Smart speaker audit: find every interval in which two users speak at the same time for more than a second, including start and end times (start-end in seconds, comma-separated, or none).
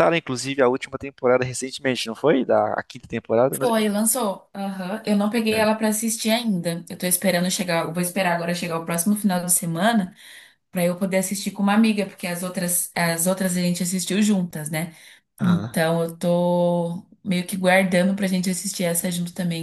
none